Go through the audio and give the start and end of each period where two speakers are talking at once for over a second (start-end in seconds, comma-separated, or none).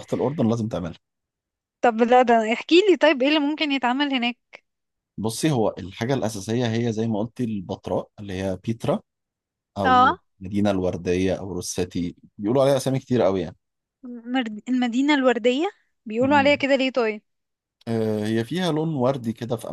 none